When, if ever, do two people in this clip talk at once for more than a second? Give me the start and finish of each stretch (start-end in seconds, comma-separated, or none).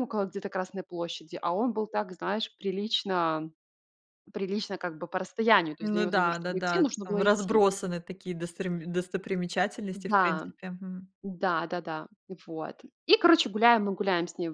5.8-7.6